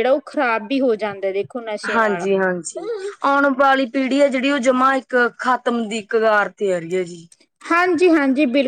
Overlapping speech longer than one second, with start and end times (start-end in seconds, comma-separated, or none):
none